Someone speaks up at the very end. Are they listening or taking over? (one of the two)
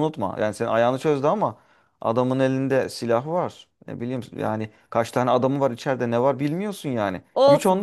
taking over